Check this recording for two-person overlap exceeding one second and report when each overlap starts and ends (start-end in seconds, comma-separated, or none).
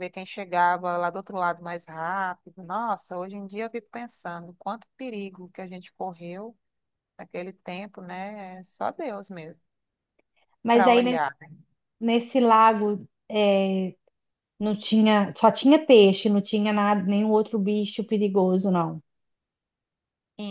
none